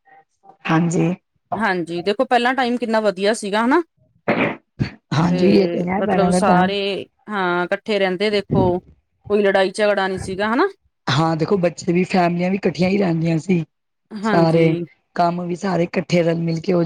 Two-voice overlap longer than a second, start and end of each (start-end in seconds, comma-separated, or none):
none